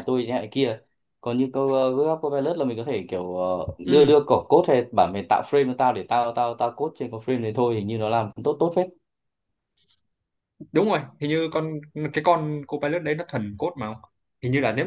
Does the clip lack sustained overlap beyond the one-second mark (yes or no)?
yes